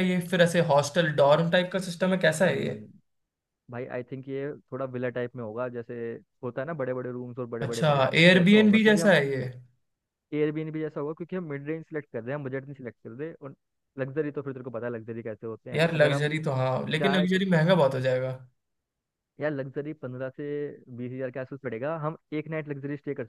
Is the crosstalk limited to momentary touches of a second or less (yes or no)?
no